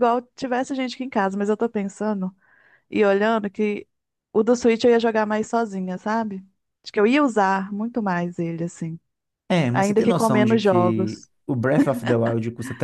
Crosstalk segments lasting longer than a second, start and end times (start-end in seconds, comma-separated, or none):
9.7-11.3